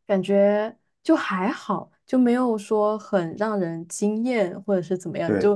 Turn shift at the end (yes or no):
no